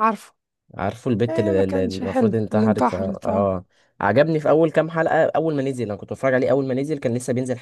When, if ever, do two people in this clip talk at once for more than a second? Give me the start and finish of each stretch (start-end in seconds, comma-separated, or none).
1.3-3.5